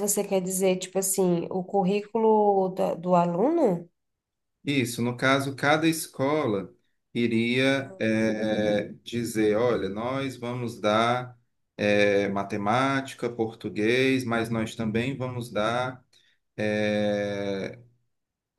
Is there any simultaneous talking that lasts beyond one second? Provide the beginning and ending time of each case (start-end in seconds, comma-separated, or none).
none